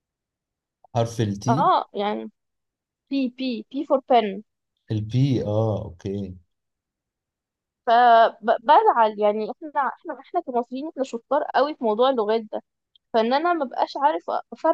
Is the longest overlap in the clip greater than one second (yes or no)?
no